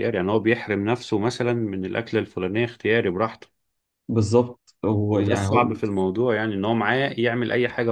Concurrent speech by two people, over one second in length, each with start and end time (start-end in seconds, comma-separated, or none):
none